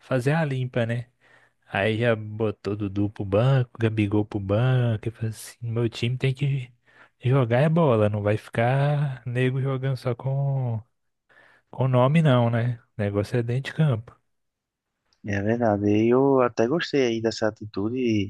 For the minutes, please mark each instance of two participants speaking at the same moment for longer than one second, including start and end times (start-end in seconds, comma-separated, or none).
none